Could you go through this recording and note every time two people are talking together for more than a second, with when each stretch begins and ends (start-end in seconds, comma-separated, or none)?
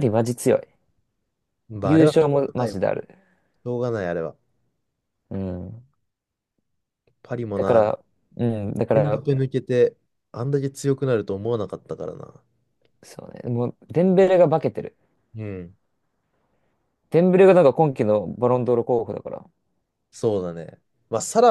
1.8-3.1